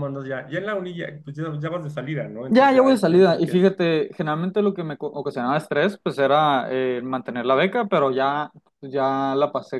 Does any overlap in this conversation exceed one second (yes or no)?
yes